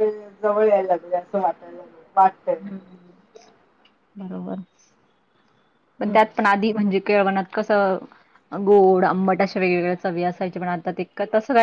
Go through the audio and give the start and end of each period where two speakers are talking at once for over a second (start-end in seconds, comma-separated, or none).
none